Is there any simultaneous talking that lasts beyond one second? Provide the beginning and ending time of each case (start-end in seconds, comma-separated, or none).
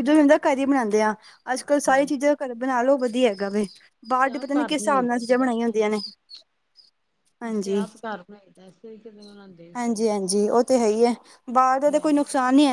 4.1-6.0